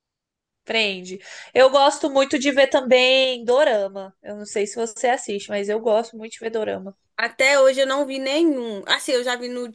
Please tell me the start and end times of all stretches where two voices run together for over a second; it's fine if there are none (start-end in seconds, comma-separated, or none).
none